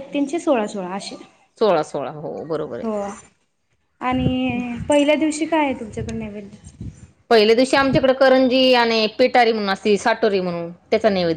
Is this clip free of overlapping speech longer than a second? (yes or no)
yes